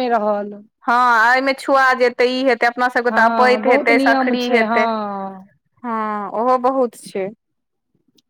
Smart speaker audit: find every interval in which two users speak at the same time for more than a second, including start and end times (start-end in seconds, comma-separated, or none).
3.1-4.8